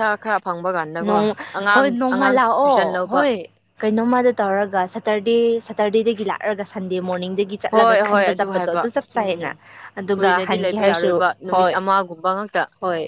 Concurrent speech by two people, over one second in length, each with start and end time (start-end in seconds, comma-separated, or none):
10.1-11.8